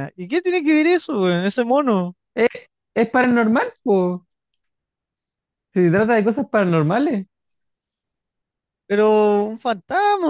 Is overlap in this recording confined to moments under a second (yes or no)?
yes